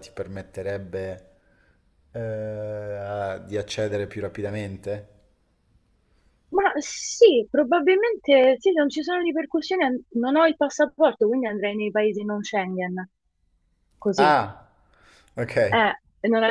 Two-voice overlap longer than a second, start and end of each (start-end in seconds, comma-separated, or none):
none